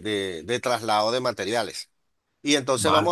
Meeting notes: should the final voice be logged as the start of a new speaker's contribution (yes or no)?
no